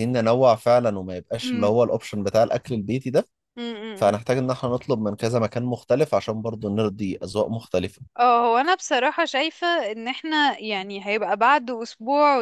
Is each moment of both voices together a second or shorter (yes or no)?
yes